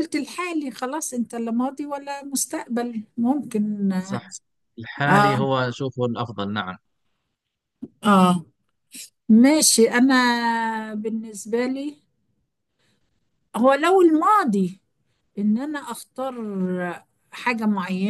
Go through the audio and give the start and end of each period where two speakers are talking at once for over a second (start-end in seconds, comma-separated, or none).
none